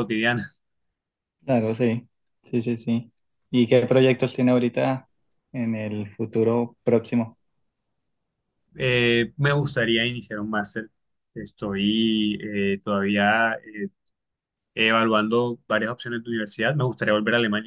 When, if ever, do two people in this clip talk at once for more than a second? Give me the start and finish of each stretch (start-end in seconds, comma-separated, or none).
none